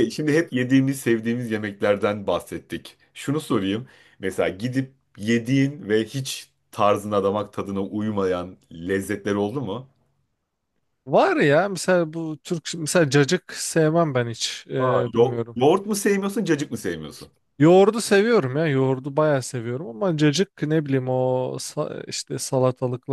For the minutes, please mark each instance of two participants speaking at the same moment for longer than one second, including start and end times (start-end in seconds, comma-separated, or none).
none